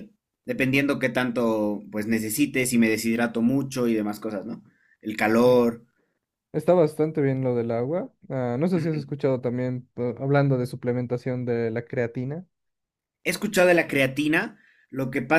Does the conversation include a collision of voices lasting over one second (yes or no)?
no